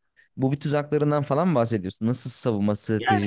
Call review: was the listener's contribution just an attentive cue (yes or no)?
no